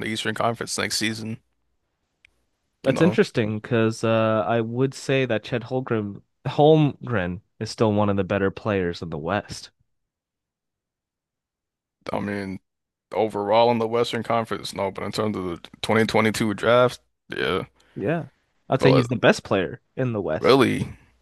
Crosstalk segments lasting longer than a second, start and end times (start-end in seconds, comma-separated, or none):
none